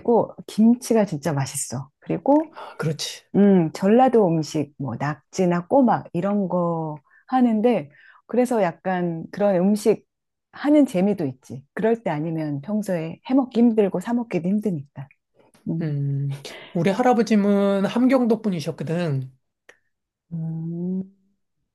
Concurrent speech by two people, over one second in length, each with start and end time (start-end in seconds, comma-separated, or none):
none